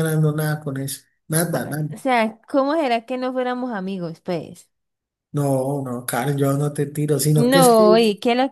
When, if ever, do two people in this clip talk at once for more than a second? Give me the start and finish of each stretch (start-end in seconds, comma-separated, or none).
none